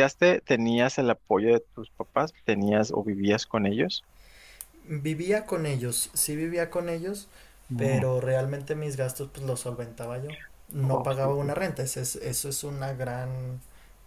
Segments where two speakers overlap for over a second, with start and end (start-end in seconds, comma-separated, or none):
none